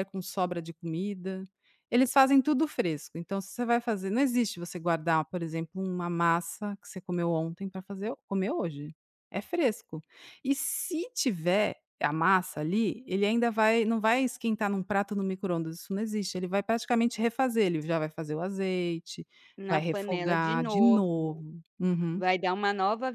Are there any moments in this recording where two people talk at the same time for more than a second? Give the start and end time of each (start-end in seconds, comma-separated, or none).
19.7-21.4